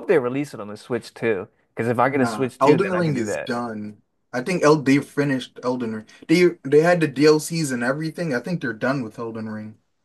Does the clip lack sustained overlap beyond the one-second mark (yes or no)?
no